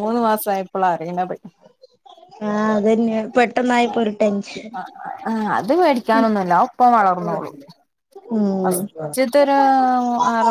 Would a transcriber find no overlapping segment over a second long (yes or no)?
yes